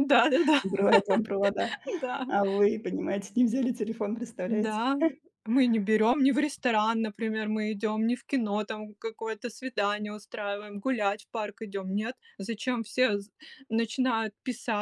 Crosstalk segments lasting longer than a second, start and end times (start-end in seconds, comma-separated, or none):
none